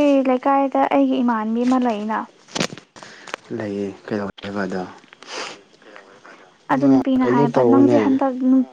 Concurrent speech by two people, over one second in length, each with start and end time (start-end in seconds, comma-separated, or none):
6.7-8.2